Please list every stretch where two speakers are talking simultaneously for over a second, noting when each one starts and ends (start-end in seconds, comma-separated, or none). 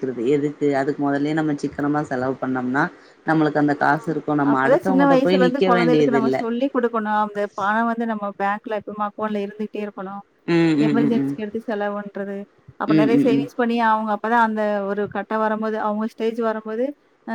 4.5-6.4